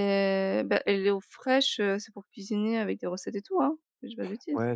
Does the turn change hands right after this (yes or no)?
yes